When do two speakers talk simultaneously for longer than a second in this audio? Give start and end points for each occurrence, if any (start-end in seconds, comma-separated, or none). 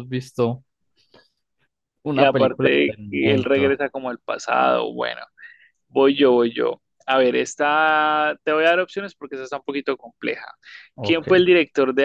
2.1-3.8